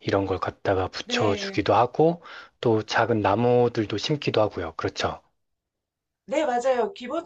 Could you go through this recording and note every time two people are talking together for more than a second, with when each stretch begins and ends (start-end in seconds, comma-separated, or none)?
none